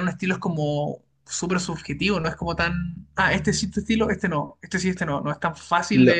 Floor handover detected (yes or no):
yes